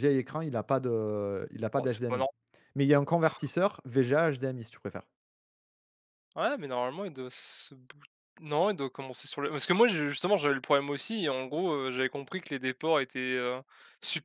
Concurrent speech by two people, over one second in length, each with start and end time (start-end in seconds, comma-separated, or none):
none